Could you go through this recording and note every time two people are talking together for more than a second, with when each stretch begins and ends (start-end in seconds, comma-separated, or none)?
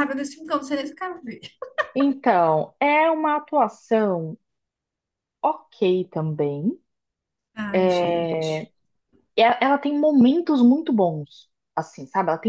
none